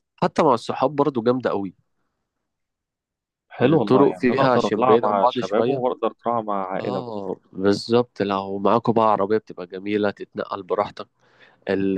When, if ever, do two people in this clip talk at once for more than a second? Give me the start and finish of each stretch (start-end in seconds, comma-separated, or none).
3.6-5.8